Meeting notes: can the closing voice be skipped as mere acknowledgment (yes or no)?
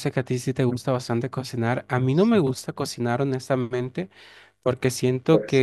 yes